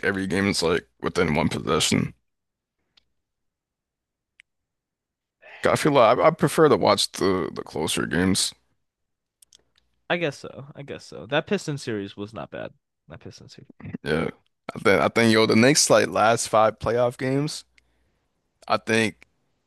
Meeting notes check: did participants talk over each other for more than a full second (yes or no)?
no